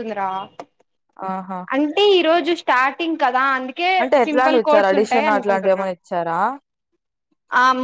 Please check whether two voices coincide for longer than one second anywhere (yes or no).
yes